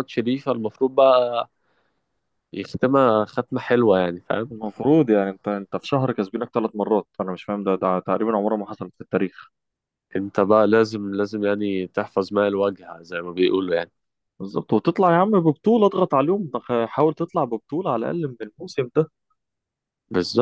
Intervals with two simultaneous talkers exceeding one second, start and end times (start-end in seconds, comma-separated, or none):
none